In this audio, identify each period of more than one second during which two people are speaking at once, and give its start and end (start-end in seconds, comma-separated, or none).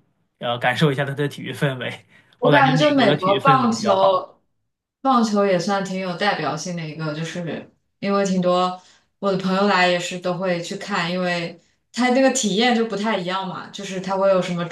2.4-4.3